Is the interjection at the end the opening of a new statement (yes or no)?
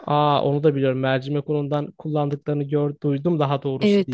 yes